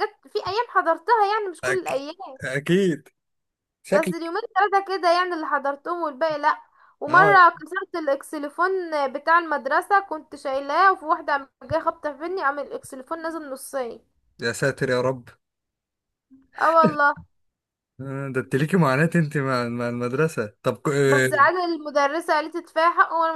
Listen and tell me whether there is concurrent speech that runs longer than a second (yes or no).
no